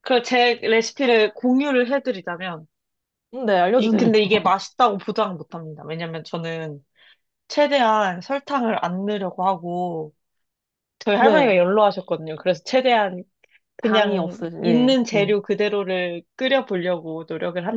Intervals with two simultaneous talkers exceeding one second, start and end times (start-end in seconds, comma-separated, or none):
13.8-15.3